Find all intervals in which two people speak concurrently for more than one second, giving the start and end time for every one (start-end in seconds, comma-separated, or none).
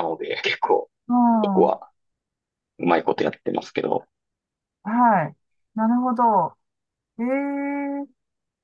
none